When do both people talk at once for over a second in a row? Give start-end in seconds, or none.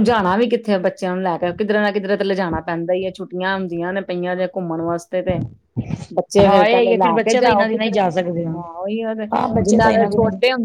6.5-8.0